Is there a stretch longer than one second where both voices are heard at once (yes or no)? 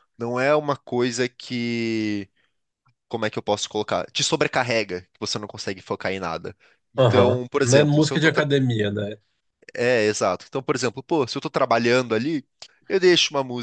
yes